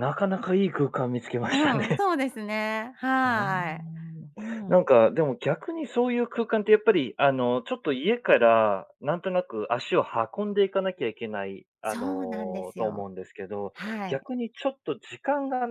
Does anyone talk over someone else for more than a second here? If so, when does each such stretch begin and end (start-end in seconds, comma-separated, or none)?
11.8-13.1